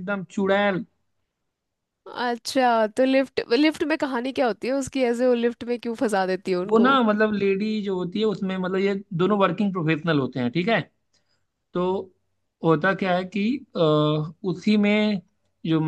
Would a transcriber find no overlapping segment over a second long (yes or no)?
yes